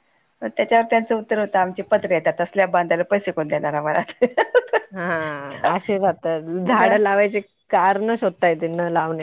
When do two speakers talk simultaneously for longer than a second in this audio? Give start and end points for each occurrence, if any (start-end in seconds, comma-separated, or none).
none